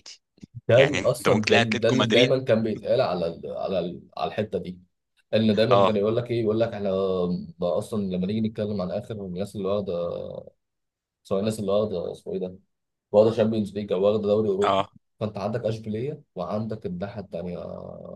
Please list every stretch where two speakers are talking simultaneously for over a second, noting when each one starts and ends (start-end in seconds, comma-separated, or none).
0.8-2.4